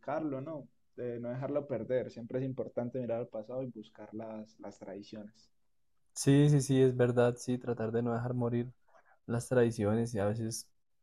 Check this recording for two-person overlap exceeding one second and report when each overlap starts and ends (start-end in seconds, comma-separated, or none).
none